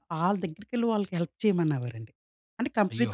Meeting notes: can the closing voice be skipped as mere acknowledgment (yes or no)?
yes